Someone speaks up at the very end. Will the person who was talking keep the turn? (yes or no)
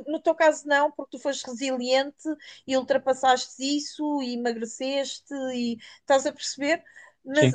yes